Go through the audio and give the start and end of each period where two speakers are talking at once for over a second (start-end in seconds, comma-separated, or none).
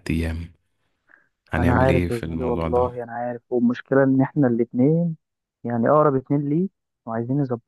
1.6-2.9